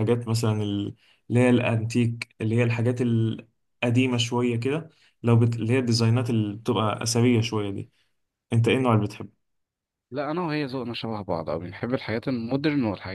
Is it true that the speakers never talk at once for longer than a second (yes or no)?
yes